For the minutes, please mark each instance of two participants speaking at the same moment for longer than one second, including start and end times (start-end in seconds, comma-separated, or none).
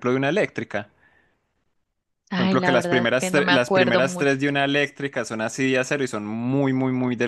2.4-4.4